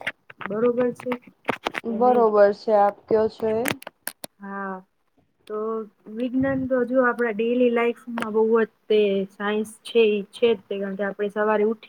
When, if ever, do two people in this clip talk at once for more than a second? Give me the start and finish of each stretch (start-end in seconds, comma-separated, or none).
none